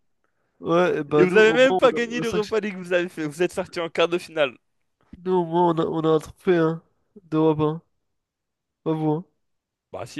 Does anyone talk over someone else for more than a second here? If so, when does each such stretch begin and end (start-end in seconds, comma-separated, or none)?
1.2-2.5